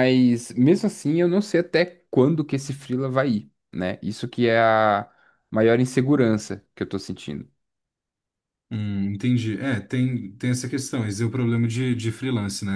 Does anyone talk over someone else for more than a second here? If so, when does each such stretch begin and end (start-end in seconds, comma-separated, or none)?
none